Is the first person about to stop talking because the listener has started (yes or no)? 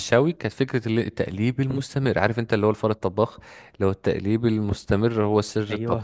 no